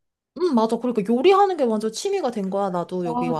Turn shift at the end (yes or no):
yes